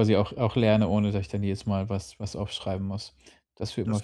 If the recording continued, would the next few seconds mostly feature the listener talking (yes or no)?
yes